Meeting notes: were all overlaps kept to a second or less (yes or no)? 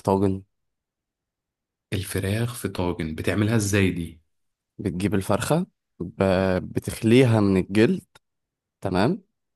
yes